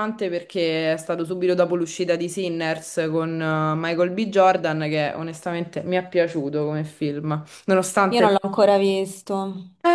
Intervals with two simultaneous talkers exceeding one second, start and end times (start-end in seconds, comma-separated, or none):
none